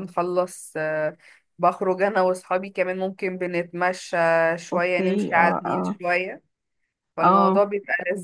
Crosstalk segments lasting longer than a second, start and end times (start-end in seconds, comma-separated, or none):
4.7-6.0